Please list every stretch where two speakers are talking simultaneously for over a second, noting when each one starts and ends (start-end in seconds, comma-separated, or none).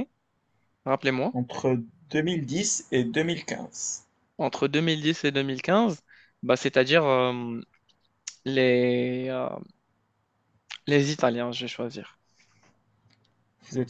none